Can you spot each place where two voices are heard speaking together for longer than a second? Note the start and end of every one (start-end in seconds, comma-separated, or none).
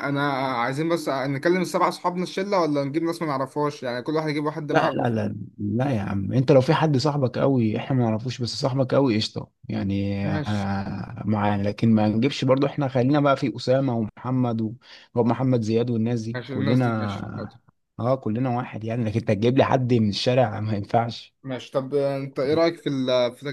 16.4-17.6